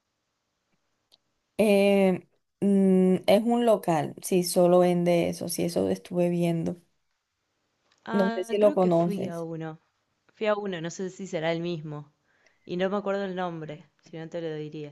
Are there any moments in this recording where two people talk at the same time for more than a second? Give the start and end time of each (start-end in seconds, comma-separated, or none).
8.1-9.5